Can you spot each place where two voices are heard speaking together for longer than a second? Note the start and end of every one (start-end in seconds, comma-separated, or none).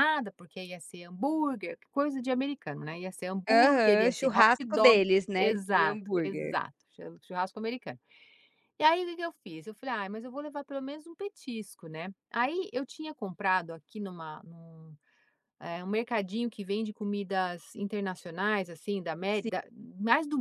3.5-6.5